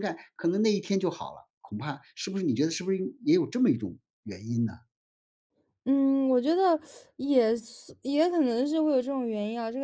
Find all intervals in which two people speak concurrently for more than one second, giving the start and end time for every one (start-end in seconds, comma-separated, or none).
none